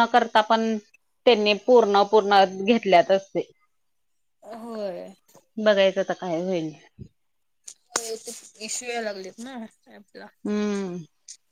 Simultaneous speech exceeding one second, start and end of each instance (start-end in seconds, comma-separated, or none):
none